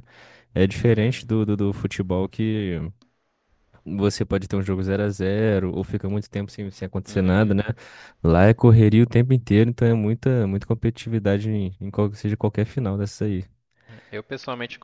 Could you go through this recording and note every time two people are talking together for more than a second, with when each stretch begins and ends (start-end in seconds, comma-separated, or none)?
none